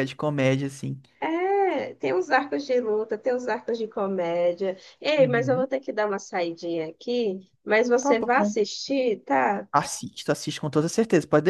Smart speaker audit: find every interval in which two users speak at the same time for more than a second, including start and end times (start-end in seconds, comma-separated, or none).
none